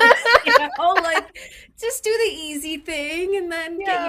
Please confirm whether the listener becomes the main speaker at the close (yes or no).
yes